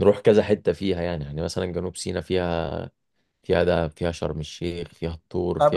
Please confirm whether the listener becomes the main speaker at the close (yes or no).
yes